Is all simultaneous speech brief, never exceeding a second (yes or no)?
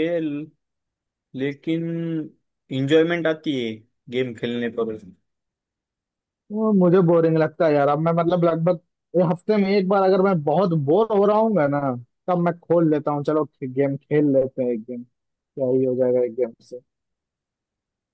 yes